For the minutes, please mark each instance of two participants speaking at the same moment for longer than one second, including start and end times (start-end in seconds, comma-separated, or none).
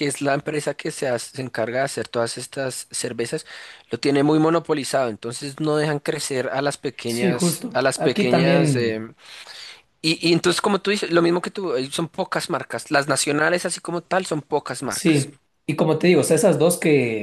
7.0-9.1